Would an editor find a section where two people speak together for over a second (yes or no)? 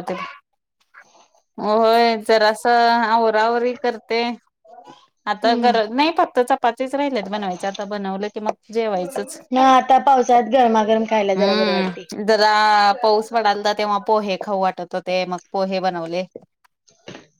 no